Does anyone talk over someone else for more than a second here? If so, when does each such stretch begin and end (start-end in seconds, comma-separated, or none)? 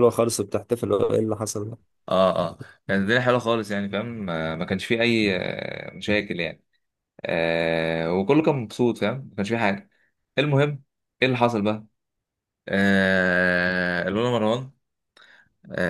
none